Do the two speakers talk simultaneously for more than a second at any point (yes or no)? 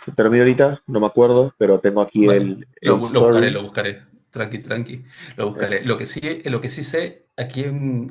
yes